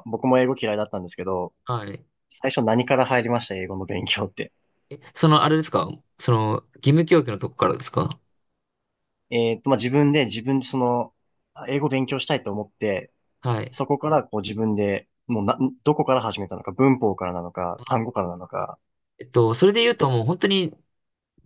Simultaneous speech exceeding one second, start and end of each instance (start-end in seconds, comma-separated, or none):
none